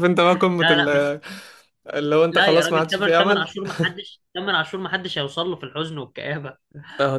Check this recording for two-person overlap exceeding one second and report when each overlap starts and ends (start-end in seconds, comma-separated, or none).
2.3-3.5